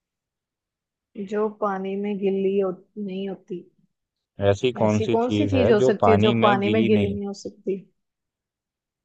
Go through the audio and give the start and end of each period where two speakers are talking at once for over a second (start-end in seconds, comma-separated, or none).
4.8-7.2